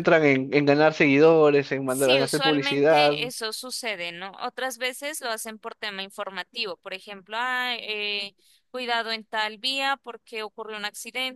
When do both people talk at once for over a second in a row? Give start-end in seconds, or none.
1.9-3.2